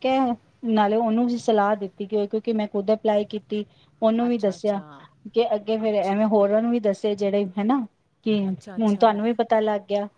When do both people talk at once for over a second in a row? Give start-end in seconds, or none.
none